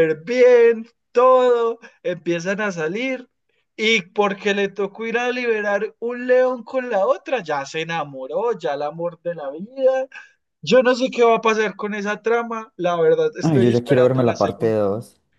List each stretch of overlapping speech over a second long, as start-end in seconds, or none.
13.4-14.8